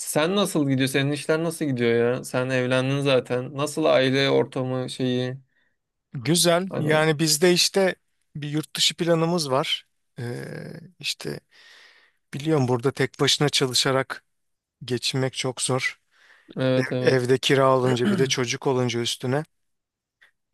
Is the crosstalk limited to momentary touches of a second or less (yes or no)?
yes